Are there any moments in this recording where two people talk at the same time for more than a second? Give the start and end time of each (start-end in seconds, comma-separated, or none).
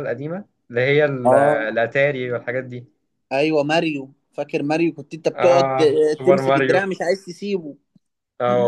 5.3-6.9